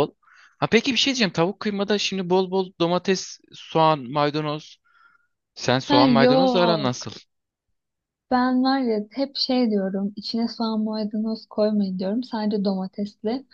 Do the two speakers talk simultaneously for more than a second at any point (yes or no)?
yes